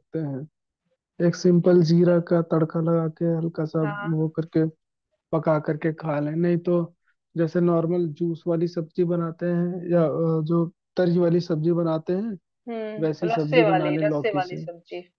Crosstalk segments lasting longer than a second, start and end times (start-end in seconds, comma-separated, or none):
13.0-14.6